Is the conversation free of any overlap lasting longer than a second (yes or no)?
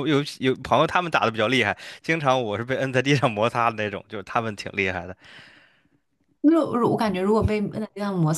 yes